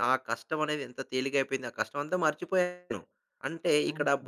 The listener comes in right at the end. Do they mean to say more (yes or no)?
no